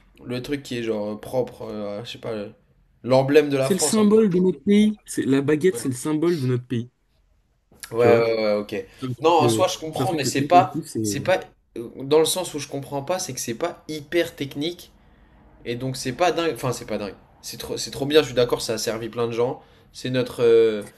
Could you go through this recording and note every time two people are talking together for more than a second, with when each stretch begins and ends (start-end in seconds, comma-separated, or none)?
9.2-11.2